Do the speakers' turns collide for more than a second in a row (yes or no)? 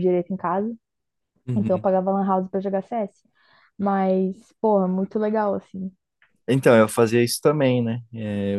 no